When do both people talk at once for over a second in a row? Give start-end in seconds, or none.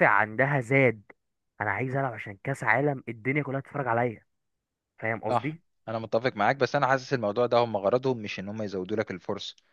none